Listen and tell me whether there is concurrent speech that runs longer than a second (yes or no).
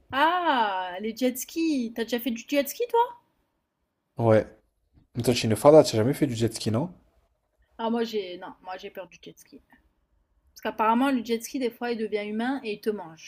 no